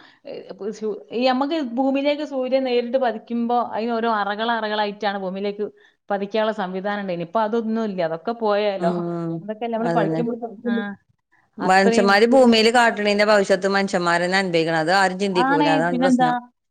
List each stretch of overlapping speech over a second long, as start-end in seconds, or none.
none